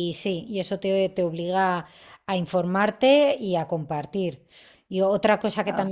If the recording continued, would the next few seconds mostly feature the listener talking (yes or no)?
no